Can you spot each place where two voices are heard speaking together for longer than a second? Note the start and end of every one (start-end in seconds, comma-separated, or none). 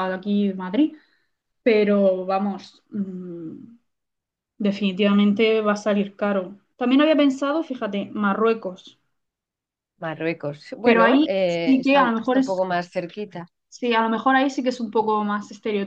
10.8-12.6